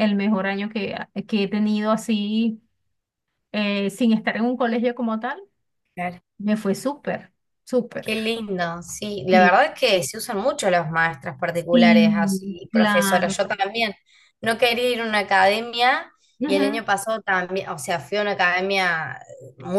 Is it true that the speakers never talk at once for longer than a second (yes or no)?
no